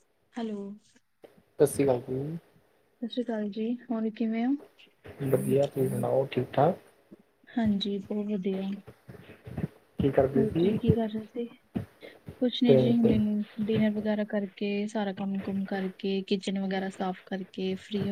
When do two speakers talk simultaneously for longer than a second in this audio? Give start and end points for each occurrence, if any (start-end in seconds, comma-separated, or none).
none